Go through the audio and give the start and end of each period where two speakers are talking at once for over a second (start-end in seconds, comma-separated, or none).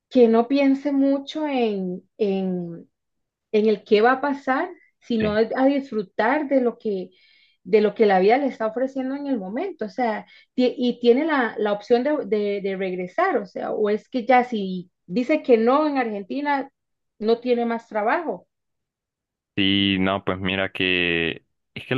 none